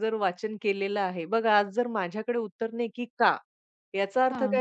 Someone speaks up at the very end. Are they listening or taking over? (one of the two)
listening